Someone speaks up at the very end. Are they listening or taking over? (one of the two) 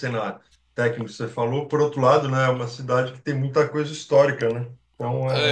taking over